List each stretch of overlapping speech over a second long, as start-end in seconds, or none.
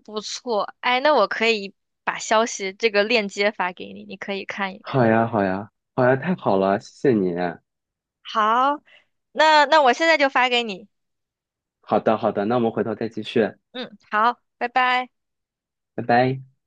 none